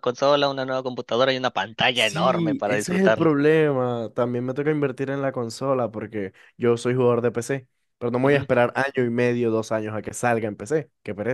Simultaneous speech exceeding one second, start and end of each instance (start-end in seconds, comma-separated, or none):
1.9-3.3